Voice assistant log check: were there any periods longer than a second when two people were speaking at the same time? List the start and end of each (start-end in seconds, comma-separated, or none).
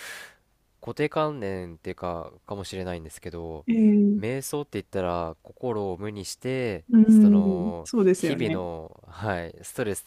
6.9-8.6